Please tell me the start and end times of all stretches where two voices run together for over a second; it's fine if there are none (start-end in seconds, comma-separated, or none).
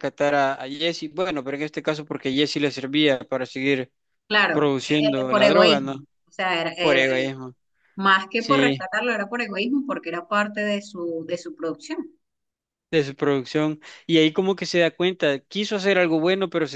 4.5-6.0